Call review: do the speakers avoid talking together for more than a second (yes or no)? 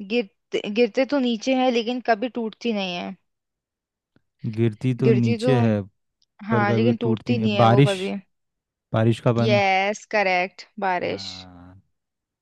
no